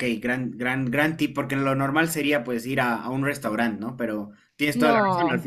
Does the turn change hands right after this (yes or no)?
no